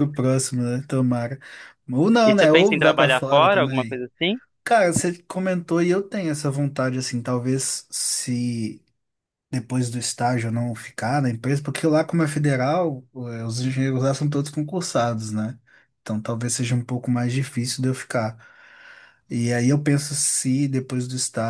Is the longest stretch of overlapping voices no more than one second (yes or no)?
no